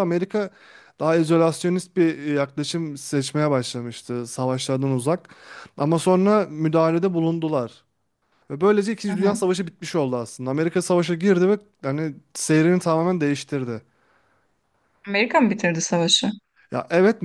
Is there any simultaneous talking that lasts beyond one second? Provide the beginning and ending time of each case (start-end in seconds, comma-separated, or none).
none